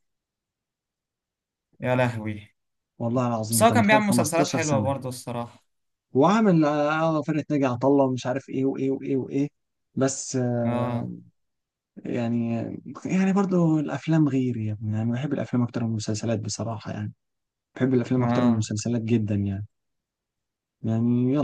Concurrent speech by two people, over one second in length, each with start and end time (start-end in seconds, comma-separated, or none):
3.5-4.9